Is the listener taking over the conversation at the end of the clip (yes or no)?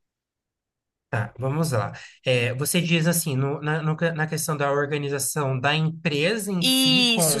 yes